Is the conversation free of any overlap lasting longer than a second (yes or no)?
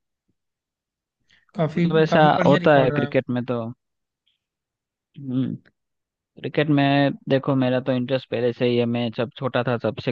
no